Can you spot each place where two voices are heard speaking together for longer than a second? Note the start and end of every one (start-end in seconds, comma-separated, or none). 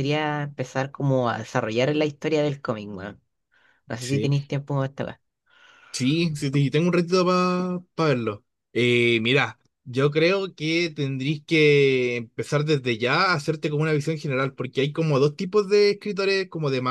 none